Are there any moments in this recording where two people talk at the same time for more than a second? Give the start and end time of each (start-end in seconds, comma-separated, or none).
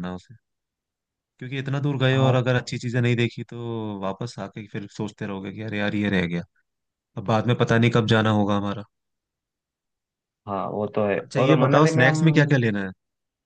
11.2-12.6